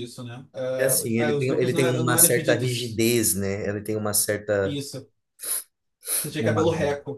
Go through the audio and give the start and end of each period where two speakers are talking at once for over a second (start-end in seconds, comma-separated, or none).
0.8-3.0